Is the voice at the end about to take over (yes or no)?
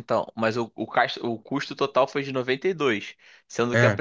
no